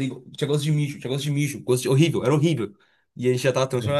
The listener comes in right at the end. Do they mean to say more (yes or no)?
no